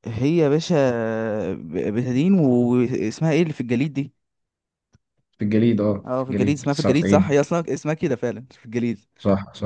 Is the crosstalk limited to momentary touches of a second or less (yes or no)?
no